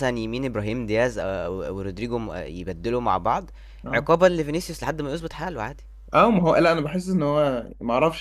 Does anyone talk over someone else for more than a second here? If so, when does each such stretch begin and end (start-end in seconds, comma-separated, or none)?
none